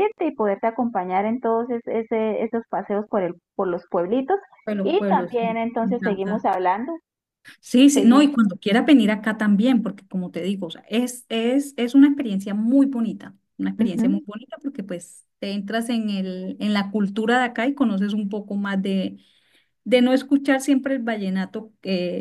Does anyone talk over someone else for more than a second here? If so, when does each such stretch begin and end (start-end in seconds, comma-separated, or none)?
4.8-6.5